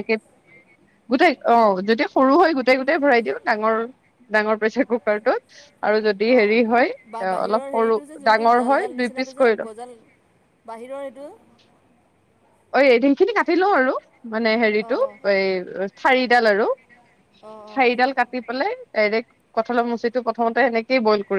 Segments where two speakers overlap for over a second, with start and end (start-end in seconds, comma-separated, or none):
7.5-9.7